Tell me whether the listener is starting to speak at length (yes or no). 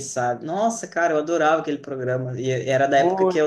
no